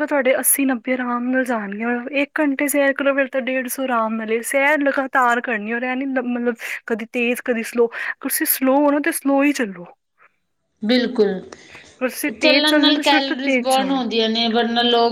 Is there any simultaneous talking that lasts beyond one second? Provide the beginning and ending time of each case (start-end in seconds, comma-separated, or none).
12.4-14.0